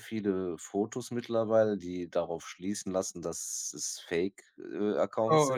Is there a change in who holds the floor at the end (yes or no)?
yes